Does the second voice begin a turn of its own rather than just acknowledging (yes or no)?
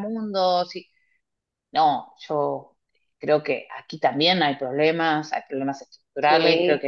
no